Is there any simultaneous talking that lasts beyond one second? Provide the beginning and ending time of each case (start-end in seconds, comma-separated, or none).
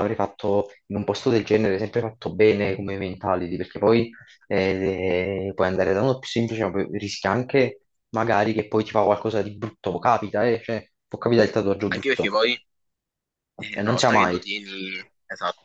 none